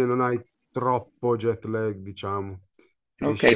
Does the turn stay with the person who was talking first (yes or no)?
no